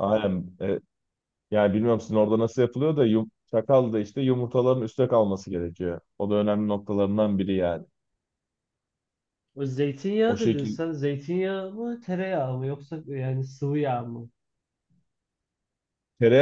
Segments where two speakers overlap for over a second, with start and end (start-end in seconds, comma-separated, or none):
none